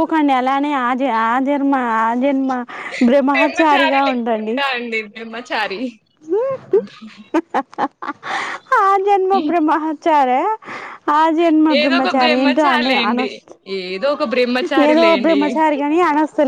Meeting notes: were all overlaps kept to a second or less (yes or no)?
no